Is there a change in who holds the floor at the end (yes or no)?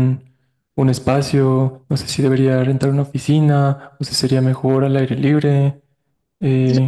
yes